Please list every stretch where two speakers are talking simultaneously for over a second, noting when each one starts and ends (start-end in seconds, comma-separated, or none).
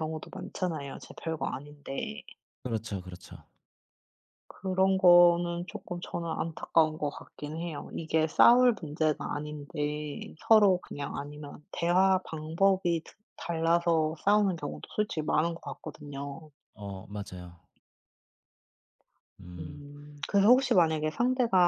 none